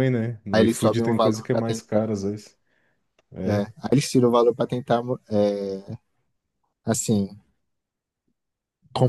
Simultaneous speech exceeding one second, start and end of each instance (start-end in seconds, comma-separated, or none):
0.5-2.0